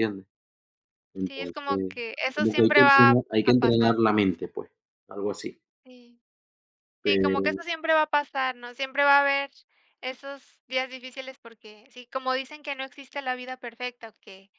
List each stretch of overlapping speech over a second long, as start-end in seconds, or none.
1.2-4.0